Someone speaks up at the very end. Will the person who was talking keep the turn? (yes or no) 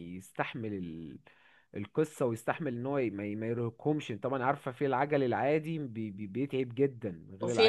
no